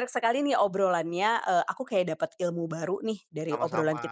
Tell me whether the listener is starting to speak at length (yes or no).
no